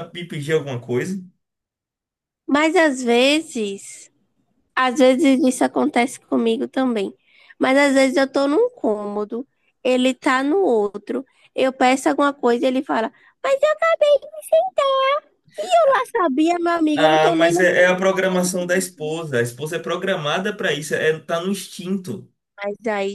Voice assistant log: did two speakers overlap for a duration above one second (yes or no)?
yes